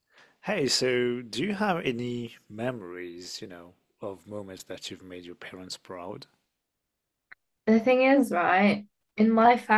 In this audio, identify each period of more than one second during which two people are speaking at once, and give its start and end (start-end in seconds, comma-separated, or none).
none